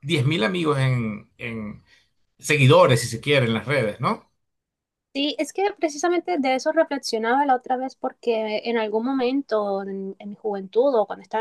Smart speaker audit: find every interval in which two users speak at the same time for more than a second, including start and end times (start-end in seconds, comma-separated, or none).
none